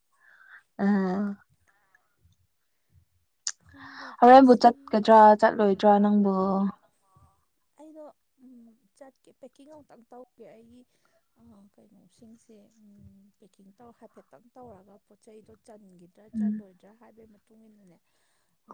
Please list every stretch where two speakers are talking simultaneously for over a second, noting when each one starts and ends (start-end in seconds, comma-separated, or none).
4.2-6.3